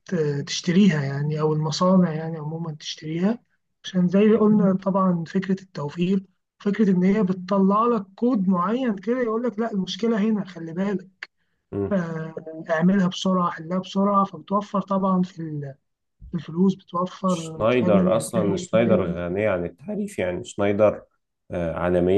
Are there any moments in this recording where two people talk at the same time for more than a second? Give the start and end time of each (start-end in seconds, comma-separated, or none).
17.3-19.0